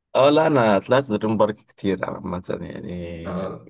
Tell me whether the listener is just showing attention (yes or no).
yes